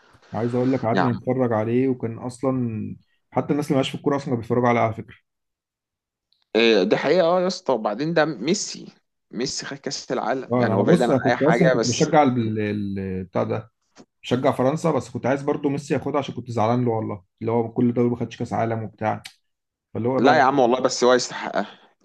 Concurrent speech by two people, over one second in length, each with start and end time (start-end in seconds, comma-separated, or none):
10.5-12.1